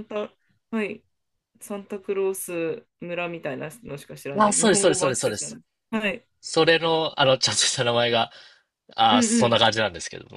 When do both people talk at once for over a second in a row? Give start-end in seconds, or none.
4.4-5.6